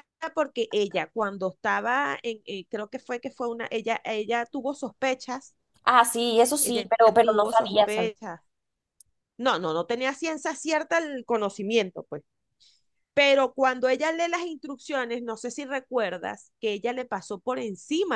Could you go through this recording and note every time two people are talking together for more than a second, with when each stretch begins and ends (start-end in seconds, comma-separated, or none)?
6.6-8.1